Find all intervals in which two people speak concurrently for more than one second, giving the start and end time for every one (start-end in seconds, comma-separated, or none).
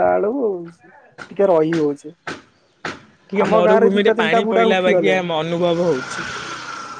3.4-5.2